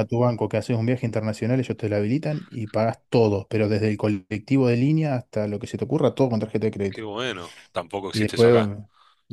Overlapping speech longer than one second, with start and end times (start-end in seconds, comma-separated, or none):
none